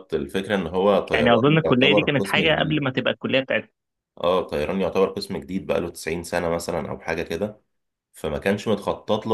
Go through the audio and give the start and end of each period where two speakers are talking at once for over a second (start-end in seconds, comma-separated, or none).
1.1-2.9